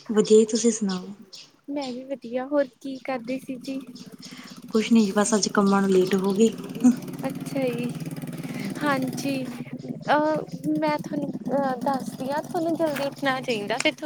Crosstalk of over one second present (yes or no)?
no